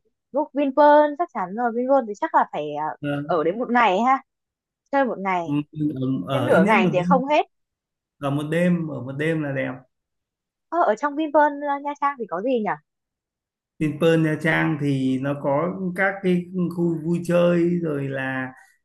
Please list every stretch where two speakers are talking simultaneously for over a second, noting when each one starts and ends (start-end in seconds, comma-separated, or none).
none